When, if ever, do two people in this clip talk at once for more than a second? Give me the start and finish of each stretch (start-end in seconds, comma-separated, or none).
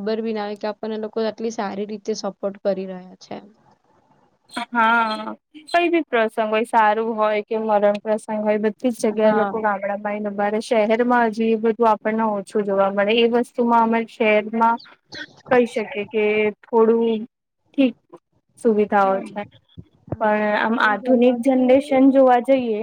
20.2-22.1